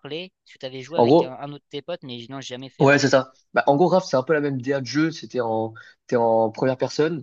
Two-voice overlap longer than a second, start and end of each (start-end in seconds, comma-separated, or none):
none